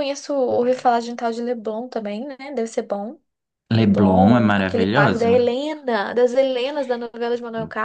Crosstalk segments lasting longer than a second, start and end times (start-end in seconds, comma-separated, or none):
3.8-5.4